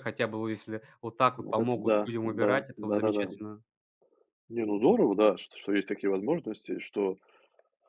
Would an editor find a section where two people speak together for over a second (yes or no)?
yes